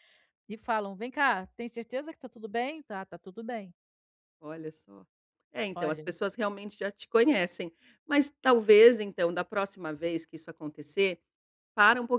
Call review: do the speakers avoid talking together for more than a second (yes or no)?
yes